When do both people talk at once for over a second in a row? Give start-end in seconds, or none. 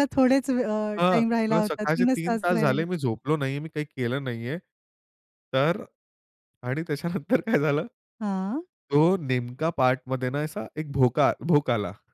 1.0-2.8